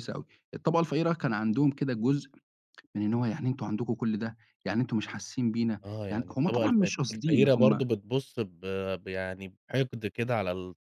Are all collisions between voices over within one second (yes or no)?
no